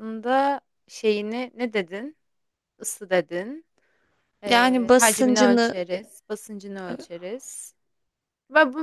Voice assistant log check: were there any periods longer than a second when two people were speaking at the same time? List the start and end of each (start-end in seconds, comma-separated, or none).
4.5-5.8